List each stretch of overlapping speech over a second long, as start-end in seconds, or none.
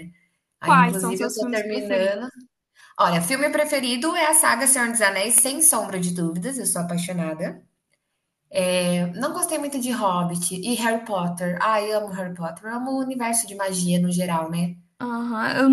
0.6-2.2